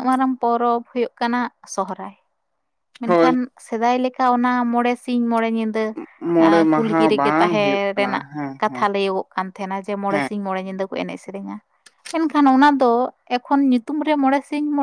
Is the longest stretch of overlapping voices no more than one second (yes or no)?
no